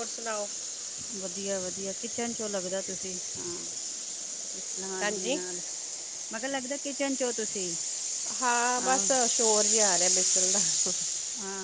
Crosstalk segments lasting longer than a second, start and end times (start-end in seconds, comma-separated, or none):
none